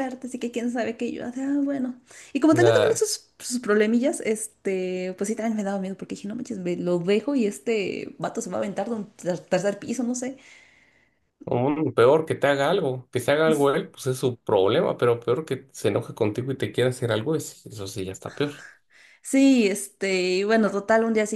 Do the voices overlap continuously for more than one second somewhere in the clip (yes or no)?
no